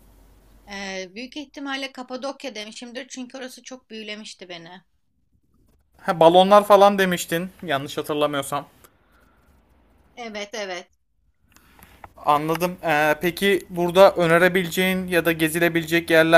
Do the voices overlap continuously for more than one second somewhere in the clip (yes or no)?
no